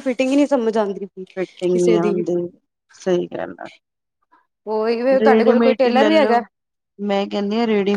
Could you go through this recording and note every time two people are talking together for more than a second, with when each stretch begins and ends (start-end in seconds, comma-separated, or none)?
5.2-6.4